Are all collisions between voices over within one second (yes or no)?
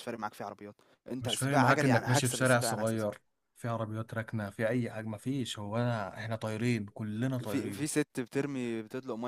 no